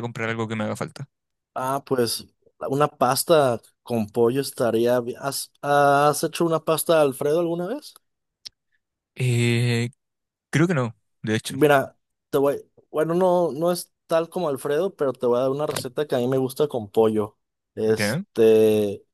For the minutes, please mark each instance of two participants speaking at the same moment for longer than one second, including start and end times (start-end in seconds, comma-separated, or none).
none